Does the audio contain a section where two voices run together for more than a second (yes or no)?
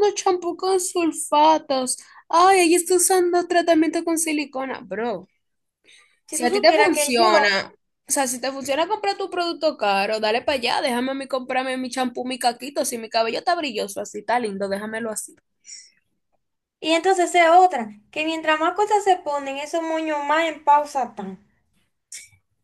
yes